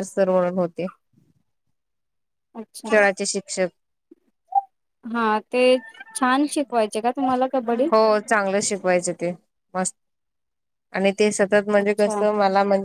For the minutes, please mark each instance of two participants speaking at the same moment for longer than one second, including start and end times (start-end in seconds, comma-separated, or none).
none